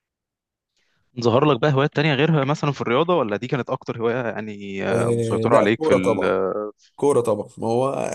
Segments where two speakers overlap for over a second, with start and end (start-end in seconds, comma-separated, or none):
4.9-6.2